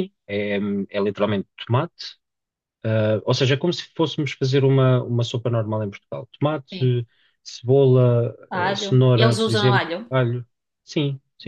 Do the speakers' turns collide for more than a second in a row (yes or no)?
yes